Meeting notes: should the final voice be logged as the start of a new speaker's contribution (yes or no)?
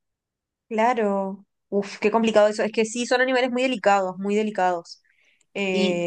yes